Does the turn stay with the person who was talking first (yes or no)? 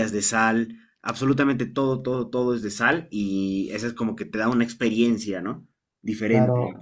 no